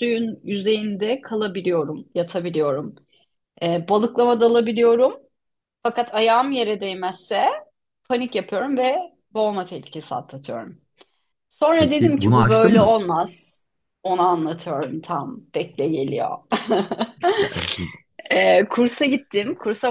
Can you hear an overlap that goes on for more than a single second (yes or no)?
yes